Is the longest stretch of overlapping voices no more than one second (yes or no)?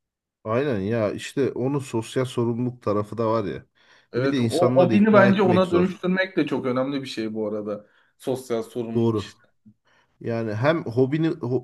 no